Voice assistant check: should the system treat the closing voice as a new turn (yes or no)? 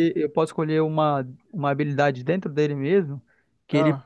no